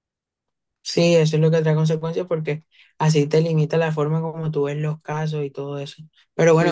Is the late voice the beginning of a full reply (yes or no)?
no